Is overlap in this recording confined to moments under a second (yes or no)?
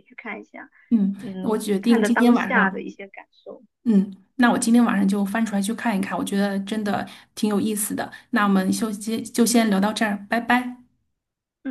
no